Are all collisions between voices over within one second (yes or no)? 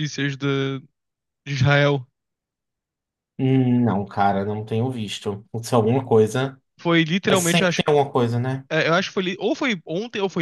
yes